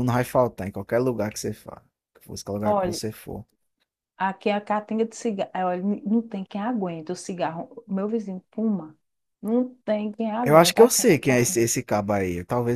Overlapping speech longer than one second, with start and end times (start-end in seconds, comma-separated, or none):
10.4-11.7